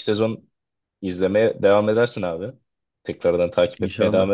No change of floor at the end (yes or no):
yes